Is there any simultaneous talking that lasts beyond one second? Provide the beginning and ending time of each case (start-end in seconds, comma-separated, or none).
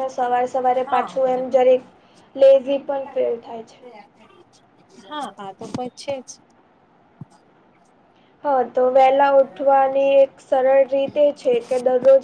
none